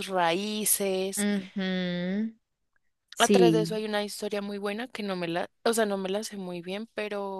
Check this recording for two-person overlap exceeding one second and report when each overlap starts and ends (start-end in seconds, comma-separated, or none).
none